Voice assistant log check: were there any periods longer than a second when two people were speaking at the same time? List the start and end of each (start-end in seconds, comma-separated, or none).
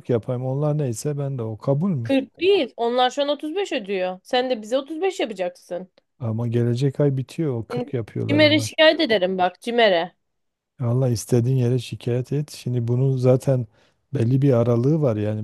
none